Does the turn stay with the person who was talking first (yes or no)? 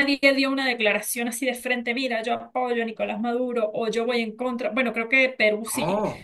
yes